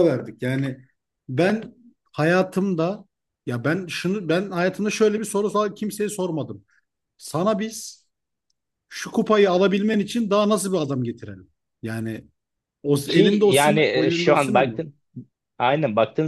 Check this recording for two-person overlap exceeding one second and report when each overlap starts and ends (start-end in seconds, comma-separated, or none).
13.1-14.8